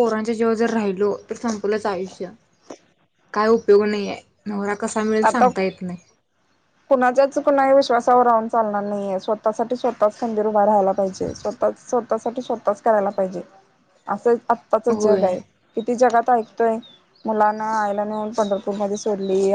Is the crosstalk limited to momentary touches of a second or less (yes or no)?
yes